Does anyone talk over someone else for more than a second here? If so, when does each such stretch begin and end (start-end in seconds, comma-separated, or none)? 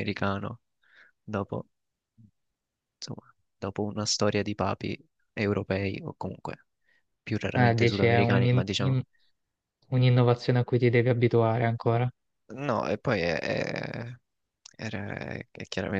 7.5-9.0